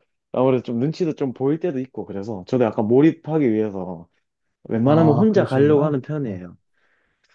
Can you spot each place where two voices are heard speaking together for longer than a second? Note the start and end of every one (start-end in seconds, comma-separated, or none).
4.8-6.4